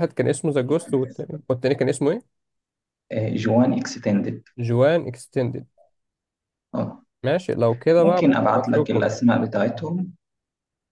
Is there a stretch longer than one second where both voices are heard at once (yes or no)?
yes